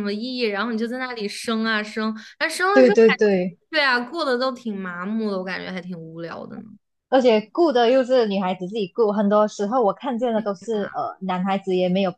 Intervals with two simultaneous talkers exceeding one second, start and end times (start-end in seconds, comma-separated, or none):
none